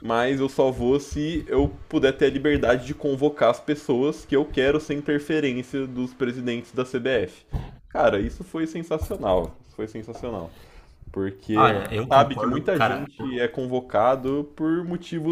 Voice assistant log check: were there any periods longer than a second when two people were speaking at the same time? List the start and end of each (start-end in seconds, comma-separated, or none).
11.5-13.1